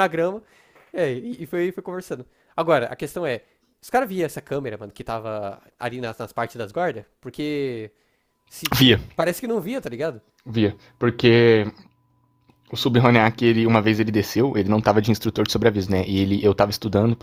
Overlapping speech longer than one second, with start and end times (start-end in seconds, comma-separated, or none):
none